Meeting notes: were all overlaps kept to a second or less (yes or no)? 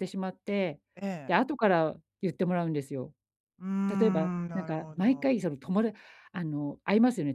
no